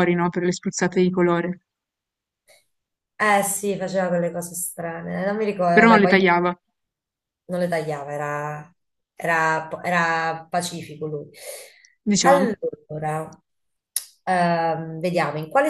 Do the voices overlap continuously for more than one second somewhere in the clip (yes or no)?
no